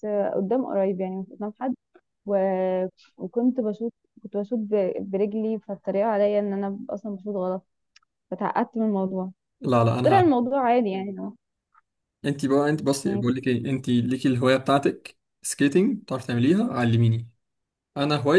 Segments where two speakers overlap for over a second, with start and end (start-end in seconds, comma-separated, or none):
none